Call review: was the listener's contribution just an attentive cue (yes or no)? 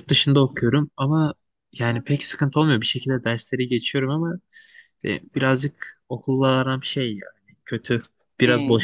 yes